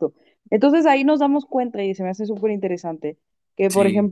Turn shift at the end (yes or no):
no